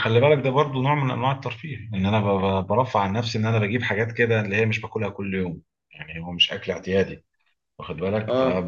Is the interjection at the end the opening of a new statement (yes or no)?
no